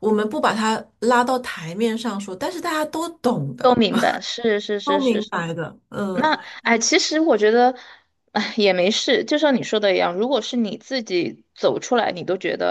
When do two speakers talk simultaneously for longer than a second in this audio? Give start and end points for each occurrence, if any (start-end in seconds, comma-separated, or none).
none